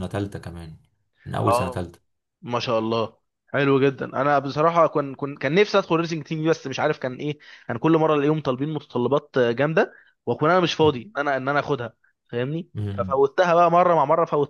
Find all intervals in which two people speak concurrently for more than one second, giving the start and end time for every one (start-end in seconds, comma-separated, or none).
none